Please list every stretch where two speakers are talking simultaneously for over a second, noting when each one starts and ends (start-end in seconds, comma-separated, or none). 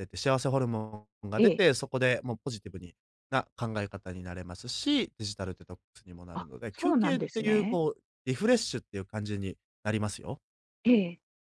6.3-7.8